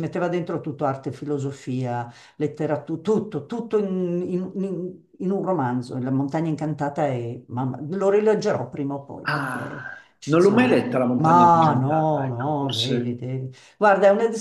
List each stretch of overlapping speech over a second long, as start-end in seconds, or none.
9.3-13.2